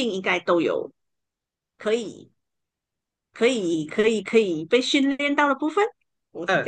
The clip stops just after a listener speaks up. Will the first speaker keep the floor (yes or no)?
no